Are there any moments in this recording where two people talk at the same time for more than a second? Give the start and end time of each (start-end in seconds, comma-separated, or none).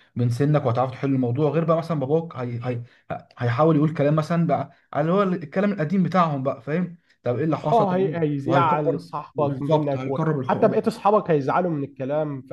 7.7-10.8